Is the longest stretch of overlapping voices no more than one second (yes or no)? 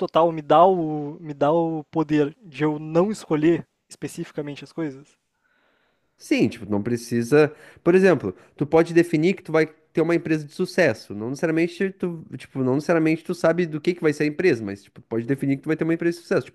yes